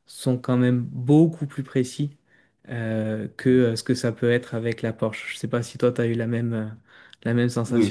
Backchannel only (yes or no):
no